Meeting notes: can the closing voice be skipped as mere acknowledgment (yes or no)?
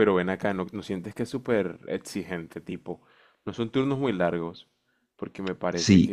no